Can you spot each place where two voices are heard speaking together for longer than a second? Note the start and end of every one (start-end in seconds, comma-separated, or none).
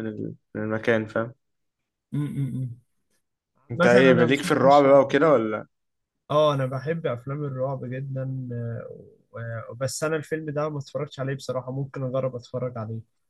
3.8-5.2